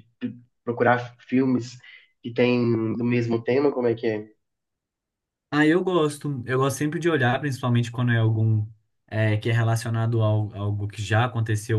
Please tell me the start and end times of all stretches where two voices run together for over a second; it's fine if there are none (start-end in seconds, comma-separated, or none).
none